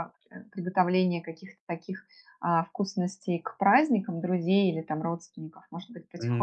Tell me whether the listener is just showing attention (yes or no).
yes